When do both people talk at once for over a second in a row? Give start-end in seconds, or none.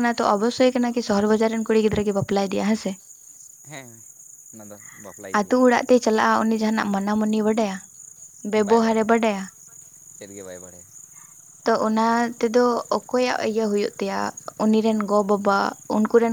none